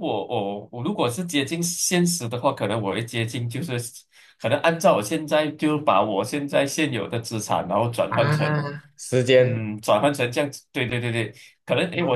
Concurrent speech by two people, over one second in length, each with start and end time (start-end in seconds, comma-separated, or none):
none